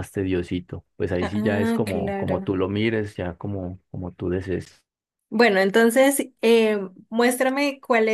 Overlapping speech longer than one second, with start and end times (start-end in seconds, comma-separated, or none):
1.2-2.6